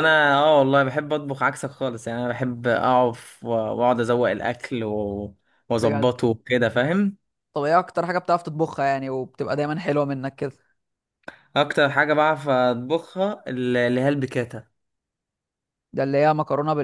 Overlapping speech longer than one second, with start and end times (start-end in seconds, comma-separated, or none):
none